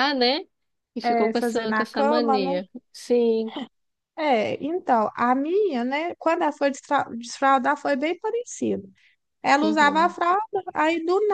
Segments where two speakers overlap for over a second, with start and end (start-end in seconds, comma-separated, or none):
1.0-2.6